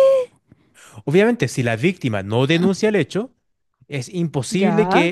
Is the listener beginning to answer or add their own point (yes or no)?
no